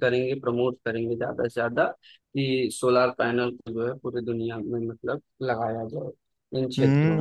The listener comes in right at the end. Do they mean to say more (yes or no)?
yes